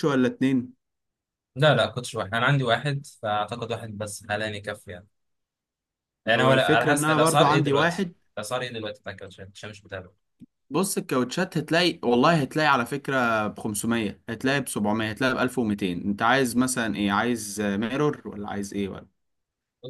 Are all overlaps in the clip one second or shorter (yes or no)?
no